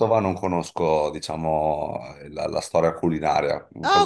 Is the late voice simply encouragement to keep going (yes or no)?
no